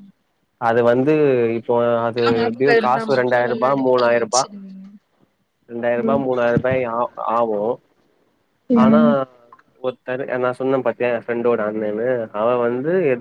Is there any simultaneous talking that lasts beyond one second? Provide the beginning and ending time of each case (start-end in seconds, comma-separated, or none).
2.4-4.4